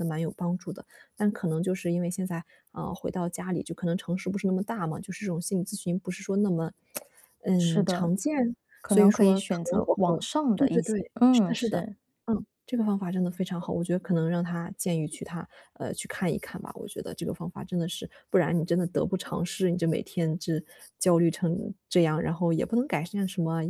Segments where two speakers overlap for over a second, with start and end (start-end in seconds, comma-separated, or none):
8.8-11.8